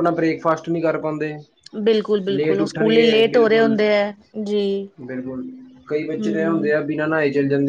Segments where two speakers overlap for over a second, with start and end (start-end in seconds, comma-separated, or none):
2.3-3.7